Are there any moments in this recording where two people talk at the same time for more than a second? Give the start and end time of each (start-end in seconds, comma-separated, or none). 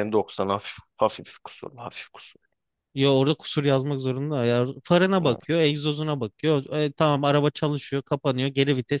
none